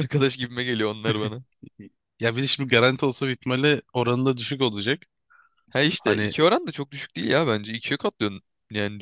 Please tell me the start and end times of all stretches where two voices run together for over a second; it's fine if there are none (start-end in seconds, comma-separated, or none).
none